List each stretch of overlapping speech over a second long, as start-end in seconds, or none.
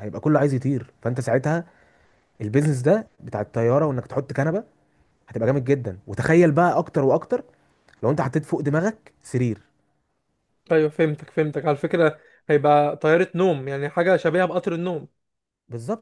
none